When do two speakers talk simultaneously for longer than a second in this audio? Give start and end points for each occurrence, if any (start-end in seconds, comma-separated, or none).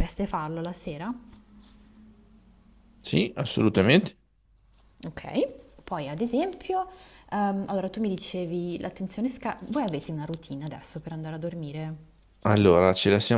none